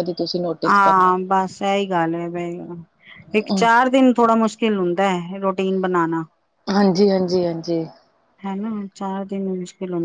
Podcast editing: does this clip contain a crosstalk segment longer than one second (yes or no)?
no